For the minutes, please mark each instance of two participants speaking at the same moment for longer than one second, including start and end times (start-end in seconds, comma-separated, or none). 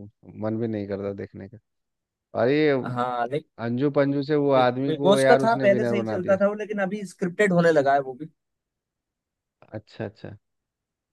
4.6-6.4